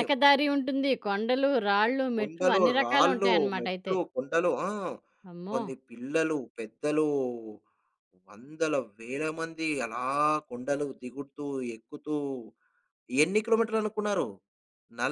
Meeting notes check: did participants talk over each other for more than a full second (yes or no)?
yes